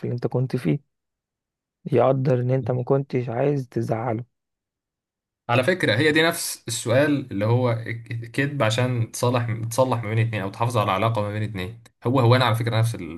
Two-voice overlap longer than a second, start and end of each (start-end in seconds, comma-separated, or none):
none